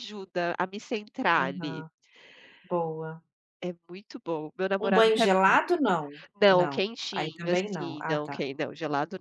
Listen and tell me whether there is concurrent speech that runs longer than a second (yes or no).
yes